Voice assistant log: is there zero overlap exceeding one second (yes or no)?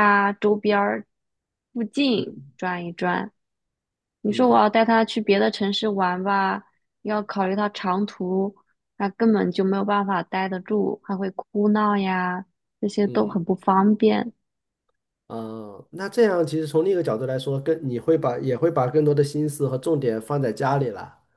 yes